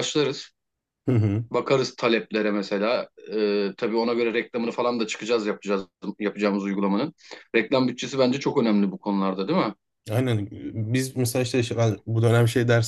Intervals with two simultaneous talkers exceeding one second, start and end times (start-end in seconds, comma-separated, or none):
none